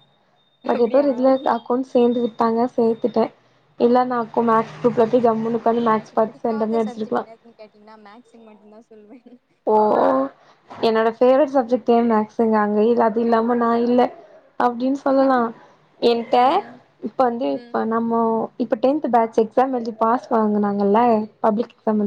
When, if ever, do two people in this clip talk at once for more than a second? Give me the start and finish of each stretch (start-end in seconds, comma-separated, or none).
5.9-7.2